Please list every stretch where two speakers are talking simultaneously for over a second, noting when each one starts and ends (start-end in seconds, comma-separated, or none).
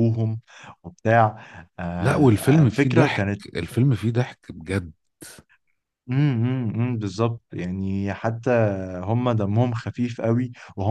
2.0-3.4